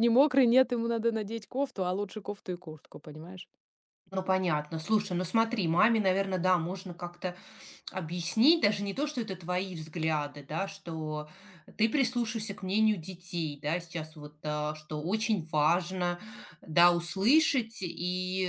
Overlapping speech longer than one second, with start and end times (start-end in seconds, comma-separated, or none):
none